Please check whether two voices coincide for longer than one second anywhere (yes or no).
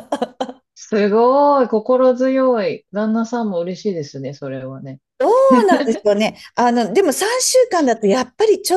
no